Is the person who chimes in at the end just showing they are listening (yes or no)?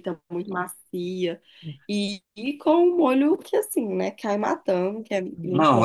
no